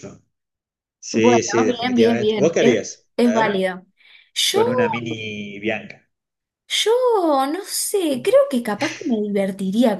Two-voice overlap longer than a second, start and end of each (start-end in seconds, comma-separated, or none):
1.1-3.6